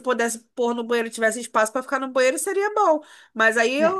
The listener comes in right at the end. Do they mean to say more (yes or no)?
no